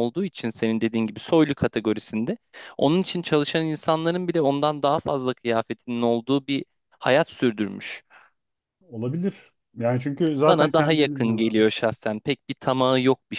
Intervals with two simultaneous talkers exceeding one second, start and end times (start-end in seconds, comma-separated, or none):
10.5-11.8